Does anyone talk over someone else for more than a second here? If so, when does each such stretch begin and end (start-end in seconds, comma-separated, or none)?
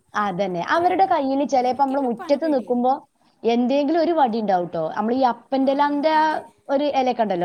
0.5-2.9